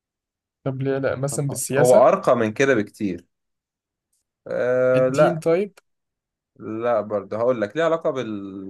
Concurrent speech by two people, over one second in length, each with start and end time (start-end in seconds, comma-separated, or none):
none